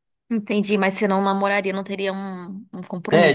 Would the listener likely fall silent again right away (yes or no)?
no